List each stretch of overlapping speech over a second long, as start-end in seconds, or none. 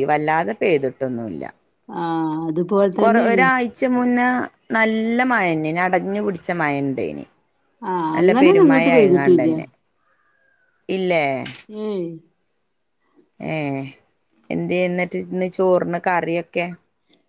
8.2-9.5